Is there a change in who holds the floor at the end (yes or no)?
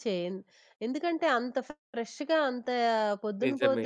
no